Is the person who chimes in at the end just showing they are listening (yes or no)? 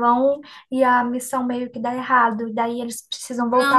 no